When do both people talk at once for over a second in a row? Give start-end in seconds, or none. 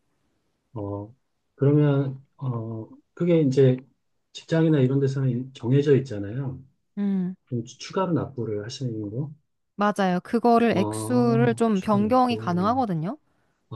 10.7-12.8